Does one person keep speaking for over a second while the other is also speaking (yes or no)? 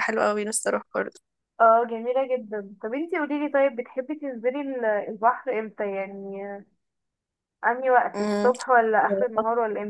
no